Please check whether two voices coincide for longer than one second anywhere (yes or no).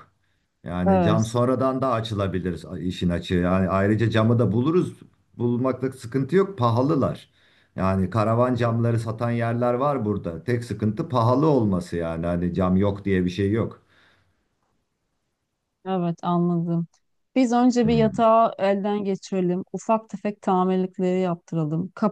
no